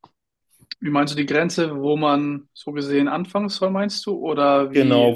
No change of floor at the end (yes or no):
no